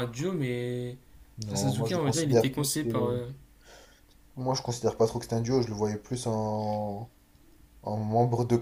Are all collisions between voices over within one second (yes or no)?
no